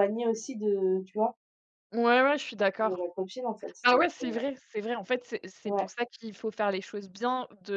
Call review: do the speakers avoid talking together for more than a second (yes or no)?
yes